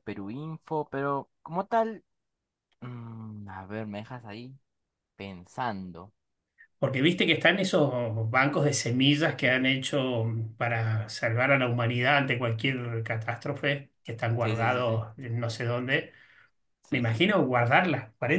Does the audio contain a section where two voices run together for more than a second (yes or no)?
no